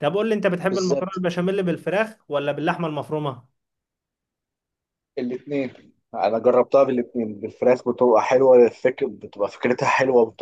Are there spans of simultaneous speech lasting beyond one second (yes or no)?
no